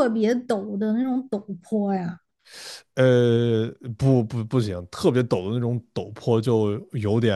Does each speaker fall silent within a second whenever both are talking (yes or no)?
yes